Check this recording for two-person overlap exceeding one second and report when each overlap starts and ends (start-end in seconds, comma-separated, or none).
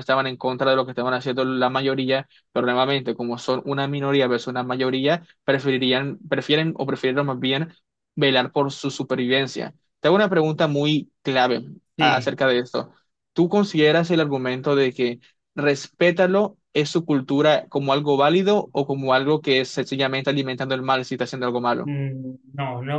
none